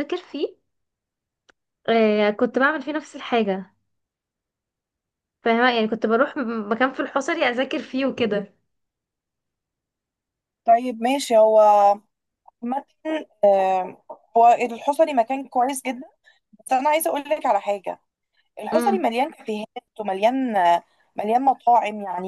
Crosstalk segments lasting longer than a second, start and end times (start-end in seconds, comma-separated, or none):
none